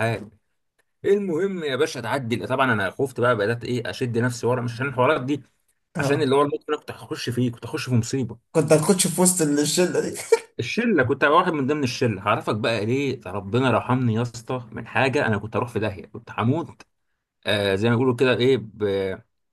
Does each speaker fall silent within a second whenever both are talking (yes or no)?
yes